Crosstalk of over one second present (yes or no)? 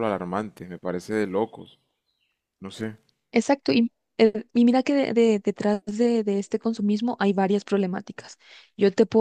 no